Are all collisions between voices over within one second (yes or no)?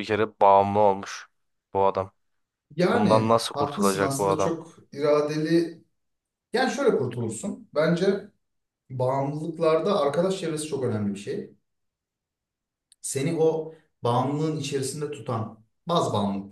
no